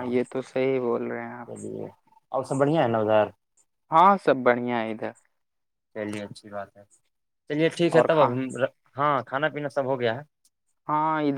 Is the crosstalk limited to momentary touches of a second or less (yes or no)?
yes